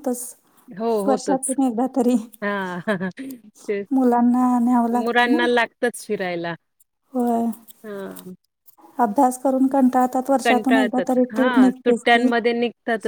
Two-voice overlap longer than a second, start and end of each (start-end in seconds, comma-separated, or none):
10.4-12.2